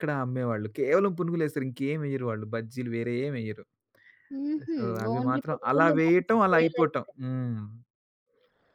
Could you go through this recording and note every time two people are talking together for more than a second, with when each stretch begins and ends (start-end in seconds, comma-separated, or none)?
4.7-6.9